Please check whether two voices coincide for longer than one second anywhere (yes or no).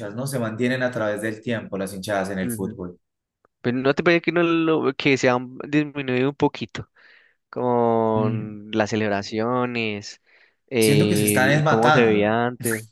yes